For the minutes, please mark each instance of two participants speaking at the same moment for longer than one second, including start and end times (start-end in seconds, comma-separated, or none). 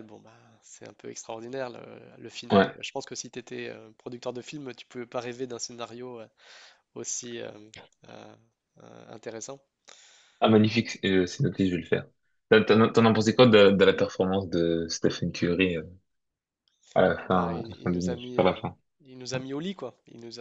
17.2-18.5